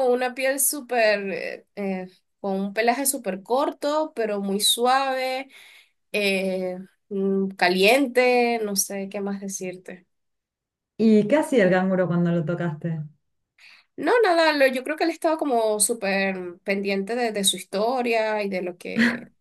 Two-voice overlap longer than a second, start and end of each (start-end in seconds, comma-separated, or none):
none